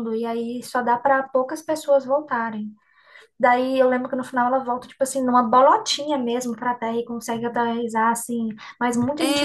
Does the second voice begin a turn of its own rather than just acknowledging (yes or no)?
yes